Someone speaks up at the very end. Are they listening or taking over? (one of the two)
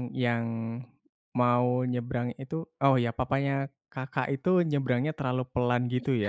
taking over